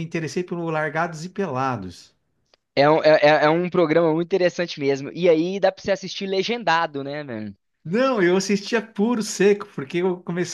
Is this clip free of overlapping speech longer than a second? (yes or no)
yes